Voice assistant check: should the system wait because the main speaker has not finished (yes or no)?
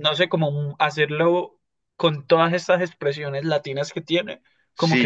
no